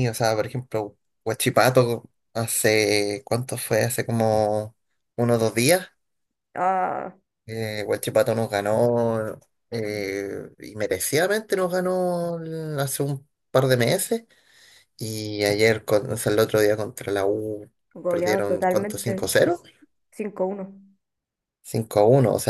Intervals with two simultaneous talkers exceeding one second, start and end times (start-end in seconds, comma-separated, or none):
18.1-19.3